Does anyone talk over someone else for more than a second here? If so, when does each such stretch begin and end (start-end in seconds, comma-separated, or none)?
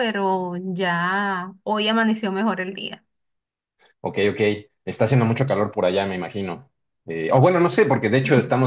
none